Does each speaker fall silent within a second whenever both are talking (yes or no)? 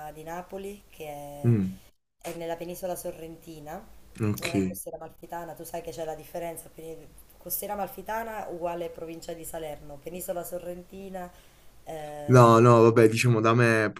yes